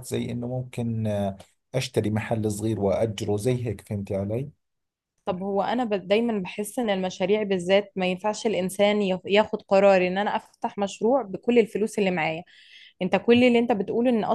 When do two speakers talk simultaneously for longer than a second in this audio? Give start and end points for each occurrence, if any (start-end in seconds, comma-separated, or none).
none